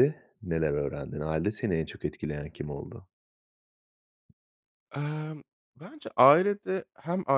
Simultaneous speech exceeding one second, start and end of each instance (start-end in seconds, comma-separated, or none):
none